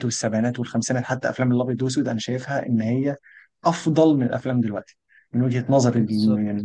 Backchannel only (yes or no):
no